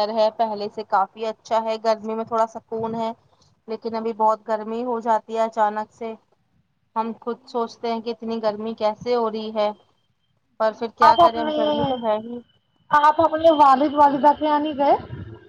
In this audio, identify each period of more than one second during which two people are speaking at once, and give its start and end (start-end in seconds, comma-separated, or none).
none